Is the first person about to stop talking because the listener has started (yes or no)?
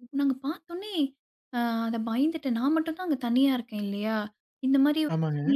no